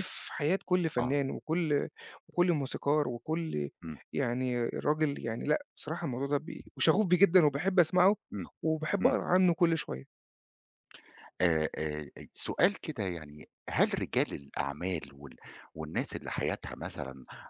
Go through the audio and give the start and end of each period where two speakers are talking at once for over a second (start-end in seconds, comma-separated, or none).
none